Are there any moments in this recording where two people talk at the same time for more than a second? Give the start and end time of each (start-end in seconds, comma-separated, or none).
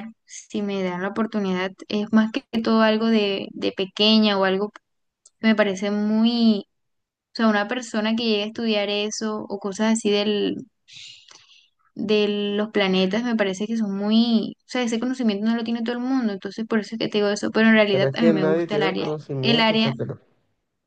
17.9-19.9